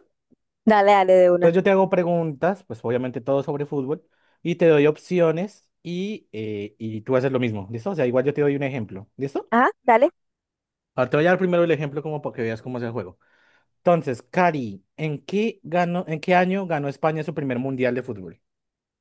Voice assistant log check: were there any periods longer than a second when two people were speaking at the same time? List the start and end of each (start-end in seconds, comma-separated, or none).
none